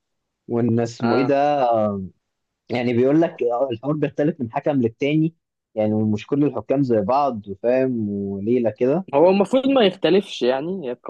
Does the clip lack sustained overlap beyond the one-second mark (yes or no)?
yes